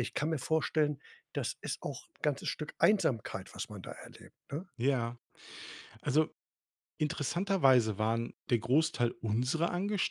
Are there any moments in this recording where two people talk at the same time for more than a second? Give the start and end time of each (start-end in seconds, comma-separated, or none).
none